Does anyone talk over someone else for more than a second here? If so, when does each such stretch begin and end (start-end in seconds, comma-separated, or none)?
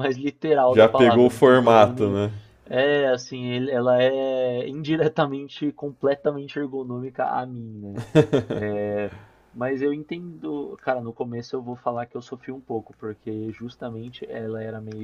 0.7-2.2